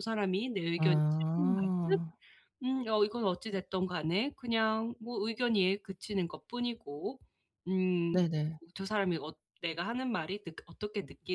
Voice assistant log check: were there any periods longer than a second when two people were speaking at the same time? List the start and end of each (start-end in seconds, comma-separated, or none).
0.8-2.0